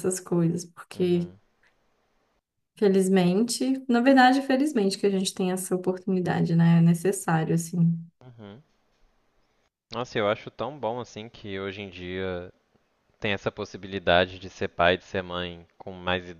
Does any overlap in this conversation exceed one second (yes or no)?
no